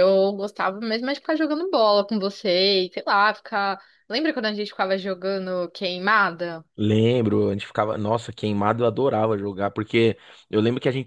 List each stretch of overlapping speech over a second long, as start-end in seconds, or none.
none